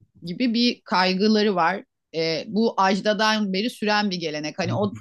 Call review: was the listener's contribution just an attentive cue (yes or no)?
yes